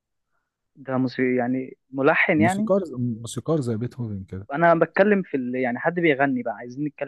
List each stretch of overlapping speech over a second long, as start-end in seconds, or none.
none